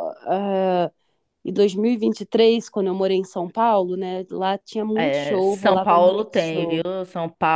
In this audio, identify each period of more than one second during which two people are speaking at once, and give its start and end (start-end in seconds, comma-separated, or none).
4.9-6.8